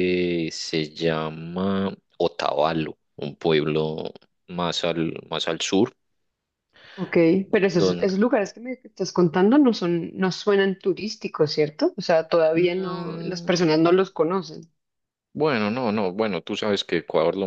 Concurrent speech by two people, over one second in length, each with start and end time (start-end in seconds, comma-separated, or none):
12.6-13.8